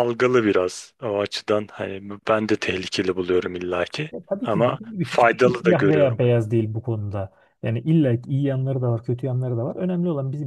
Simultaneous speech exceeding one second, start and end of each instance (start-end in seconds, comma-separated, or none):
4.1-6.2